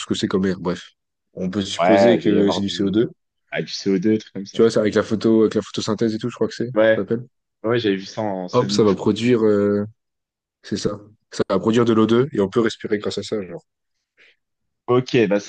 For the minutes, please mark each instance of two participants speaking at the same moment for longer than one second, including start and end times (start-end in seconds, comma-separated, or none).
1.8-3.0